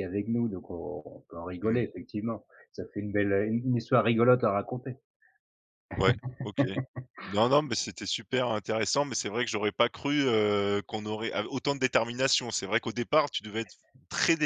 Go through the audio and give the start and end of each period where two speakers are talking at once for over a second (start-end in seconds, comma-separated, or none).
none